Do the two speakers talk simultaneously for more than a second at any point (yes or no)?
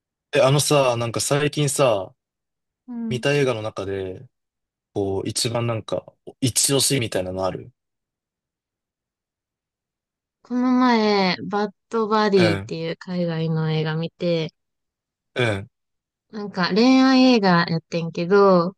no